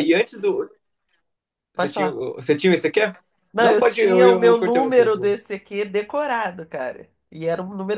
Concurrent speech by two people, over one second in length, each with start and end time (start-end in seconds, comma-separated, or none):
3.6-5.1